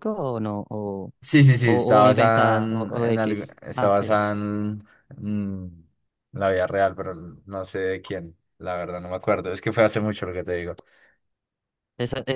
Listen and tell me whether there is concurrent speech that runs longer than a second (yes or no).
yes